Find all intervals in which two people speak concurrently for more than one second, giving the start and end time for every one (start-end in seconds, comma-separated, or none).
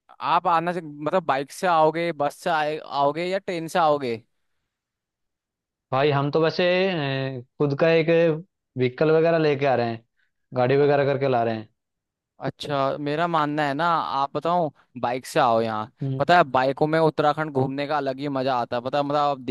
none